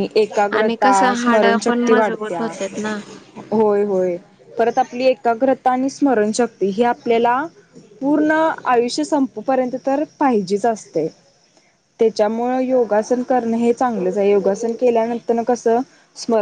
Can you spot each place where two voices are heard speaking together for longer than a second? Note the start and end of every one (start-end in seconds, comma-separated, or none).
0.6-2.4